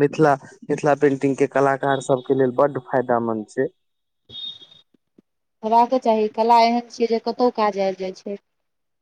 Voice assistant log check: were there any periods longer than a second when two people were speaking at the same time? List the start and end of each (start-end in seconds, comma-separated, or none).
none